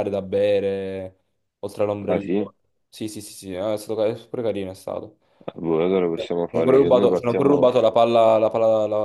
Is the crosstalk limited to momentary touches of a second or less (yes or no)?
no